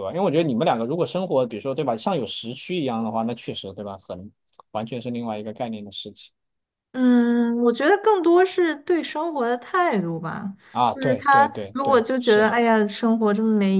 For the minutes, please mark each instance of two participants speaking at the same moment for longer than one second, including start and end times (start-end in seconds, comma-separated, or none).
10.9-12.6